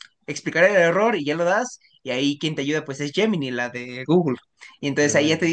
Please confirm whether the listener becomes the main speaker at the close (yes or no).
no